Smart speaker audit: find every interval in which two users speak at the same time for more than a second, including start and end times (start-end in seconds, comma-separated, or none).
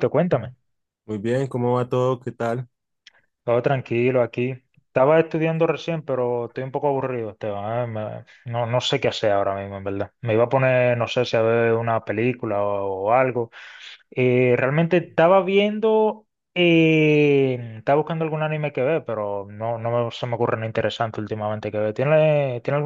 none